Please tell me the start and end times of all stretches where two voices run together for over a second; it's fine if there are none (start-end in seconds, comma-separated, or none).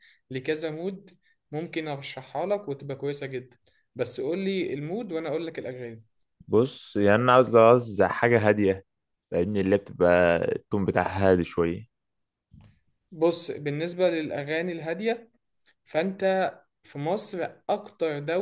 none